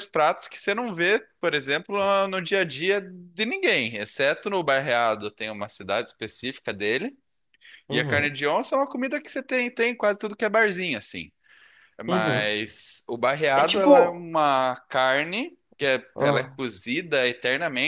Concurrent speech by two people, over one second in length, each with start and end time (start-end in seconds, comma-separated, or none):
none